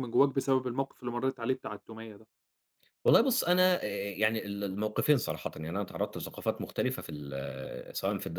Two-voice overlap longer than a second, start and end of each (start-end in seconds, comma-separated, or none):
none